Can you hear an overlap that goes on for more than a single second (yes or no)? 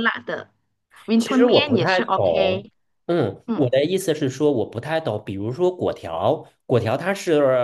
yes